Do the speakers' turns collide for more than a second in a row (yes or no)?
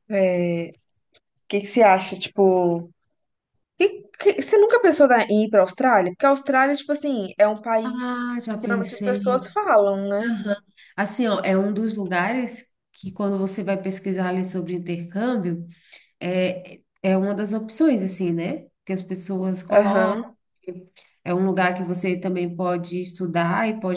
yes